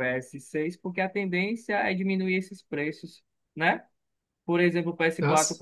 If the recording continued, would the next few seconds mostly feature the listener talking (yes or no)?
no